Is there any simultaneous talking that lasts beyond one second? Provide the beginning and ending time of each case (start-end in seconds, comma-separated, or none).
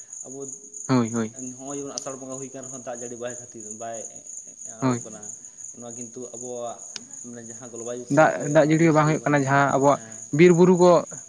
none